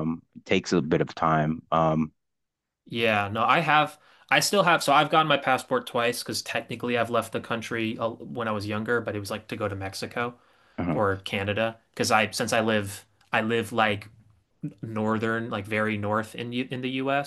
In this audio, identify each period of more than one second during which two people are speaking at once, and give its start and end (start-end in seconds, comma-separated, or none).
none